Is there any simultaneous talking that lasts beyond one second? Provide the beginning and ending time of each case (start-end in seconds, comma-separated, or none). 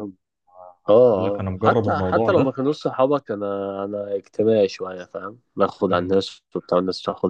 1.1-2.5